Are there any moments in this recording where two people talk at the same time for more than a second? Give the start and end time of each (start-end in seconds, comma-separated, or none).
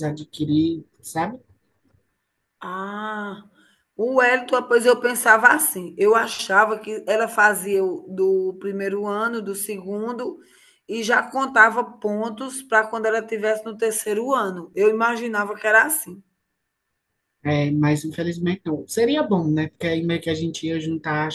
none